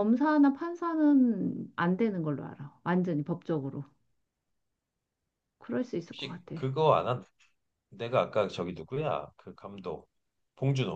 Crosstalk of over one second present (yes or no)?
no